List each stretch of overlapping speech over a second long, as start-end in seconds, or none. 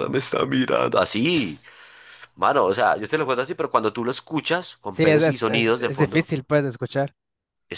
4.9-6.3